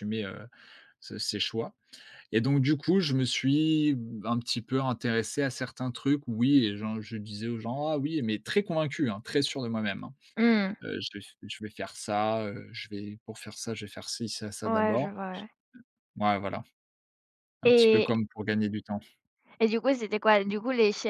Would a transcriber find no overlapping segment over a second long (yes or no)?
yes